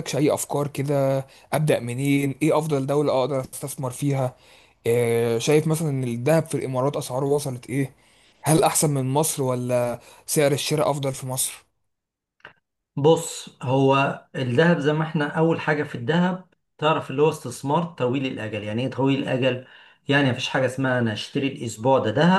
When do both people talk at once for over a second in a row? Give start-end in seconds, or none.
none